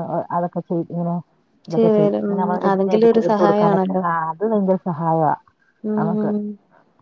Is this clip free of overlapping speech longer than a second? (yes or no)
no